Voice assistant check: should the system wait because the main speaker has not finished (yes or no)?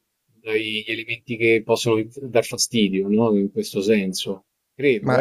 no